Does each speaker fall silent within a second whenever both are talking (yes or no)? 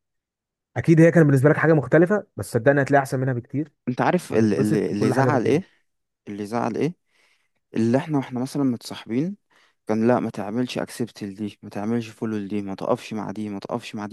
no